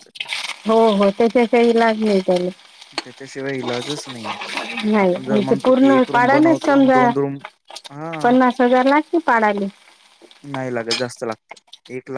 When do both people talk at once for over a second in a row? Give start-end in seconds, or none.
5.0-7.1